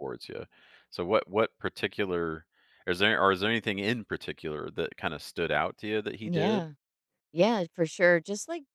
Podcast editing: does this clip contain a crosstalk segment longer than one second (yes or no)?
no